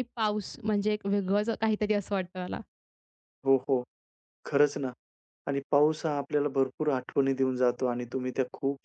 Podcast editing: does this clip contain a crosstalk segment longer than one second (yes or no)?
no